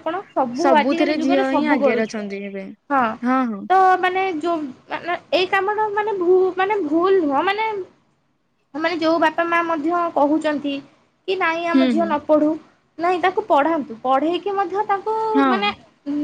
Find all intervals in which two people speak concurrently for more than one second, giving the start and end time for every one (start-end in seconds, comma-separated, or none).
0.6-2.2